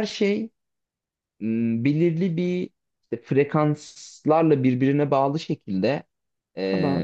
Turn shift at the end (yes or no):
no